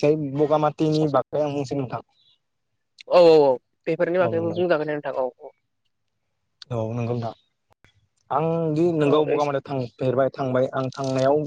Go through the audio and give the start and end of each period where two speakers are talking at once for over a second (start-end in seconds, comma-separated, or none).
none